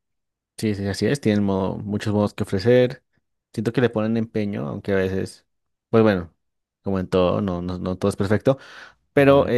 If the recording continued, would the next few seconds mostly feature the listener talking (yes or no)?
no